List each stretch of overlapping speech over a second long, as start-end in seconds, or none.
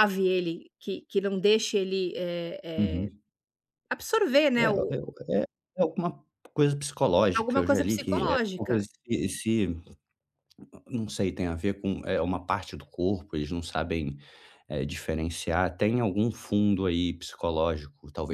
7.3-8.8